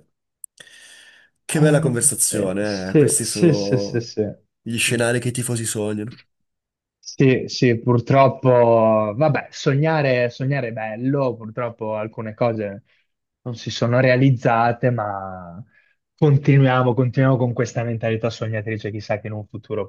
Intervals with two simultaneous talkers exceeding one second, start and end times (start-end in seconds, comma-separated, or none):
1.5-4.1